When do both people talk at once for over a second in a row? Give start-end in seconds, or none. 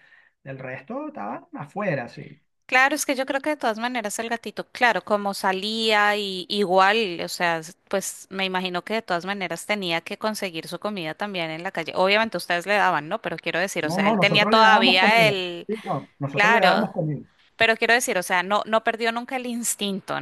13.8-15.7